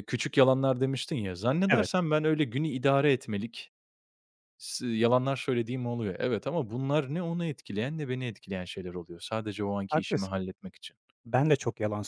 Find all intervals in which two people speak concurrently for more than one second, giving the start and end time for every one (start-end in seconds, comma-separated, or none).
none